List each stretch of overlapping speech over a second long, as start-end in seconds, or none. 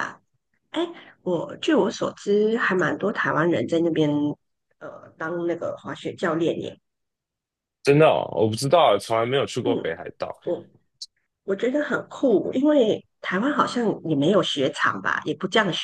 none